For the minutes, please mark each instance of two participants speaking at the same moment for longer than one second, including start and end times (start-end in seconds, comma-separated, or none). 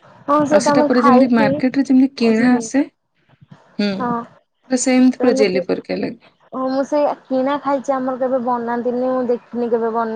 0.6-2.6